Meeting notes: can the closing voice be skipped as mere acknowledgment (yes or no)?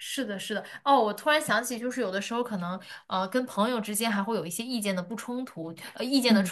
yes